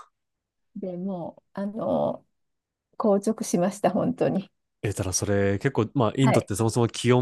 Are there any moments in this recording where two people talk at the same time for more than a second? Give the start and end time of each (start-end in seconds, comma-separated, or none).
none